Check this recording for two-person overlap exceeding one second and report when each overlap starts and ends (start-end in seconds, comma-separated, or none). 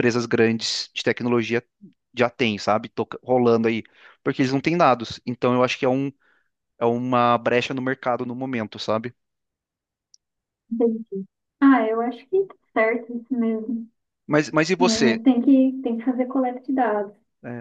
none